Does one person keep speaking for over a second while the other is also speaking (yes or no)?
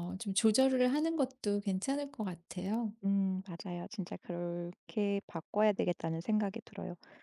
no